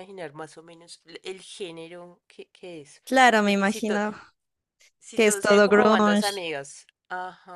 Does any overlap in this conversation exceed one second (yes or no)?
yes